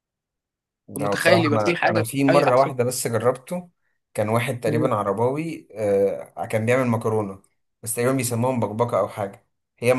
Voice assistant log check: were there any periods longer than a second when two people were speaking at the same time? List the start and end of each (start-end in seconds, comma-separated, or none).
1.0-2.7